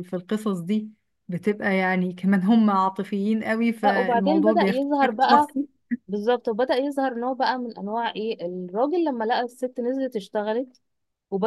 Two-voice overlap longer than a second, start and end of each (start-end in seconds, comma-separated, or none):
3.9-5.5